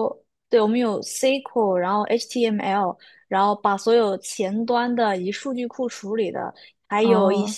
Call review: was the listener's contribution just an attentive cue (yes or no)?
yes